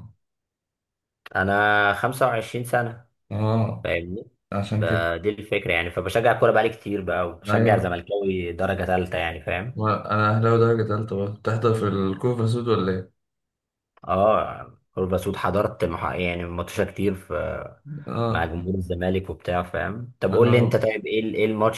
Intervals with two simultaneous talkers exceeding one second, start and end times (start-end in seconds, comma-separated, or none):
none